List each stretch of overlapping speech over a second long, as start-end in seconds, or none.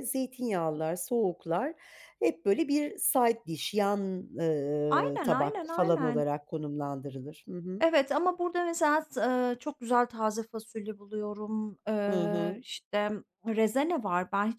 4.9-6.3